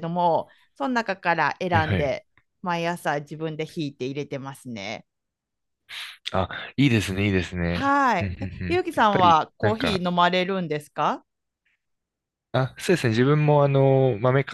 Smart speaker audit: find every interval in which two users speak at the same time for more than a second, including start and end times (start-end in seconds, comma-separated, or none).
7.7-10.1